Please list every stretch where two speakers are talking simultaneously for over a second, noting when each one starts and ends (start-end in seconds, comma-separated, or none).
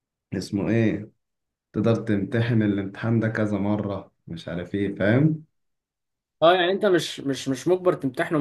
none